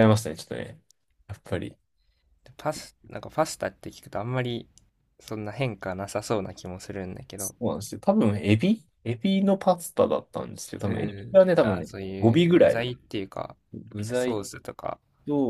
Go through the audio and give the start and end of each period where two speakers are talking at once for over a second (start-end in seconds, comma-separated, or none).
10.8-12.9